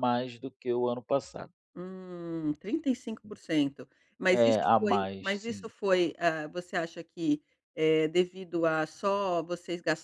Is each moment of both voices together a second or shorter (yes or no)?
no